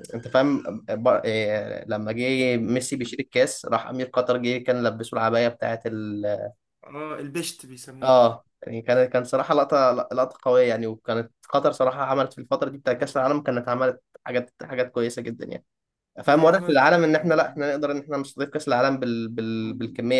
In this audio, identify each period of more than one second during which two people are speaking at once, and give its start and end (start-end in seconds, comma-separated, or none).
16.2-17.6